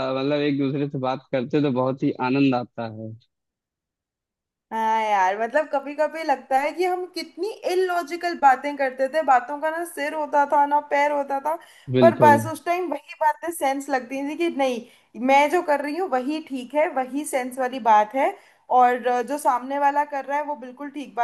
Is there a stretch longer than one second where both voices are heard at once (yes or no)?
no